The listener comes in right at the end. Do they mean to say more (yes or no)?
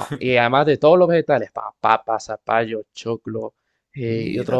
no